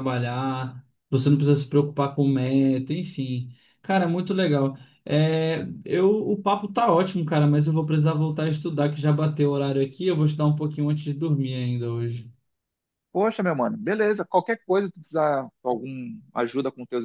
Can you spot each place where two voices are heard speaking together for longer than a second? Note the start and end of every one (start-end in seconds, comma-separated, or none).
none